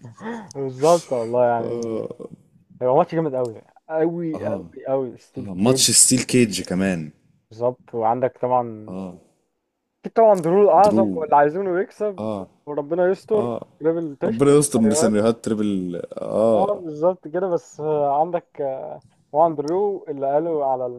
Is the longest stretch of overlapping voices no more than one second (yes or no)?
yes